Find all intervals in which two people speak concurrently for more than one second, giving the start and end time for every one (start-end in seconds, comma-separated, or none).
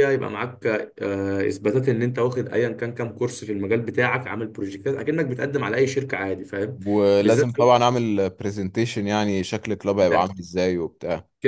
none